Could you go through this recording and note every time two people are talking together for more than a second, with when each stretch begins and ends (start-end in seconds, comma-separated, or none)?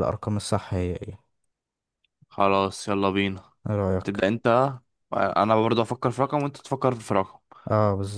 none